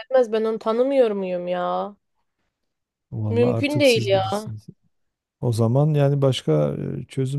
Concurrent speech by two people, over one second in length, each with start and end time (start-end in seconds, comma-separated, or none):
3.3-4.5